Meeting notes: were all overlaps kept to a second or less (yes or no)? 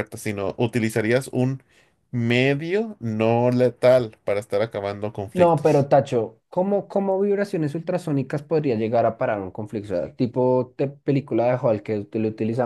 yes